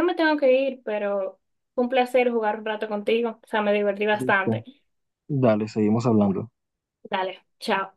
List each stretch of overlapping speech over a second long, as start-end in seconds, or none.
none